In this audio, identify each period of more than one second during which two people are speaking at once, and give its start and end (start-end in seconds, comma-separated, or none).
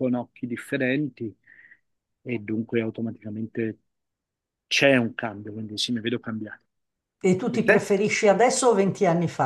none